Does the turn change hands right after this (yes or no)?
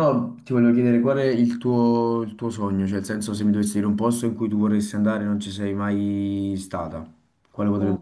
yes